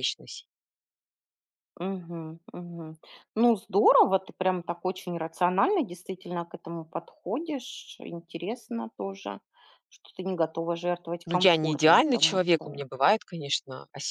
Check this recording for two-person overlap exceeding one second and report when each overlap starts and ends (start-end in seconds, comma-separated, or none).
11.2-12.8